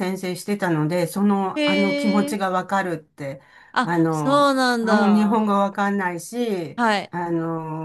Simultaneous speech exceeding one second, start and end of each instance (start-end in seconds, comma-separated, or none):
3.8-5.5